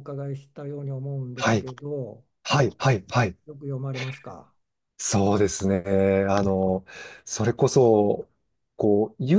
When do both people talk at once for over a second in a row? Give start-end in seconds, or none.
none